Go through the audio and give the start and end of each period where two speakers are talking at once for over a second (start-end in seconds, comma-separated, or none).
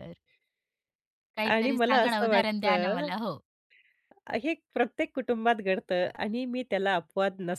1.5-3.1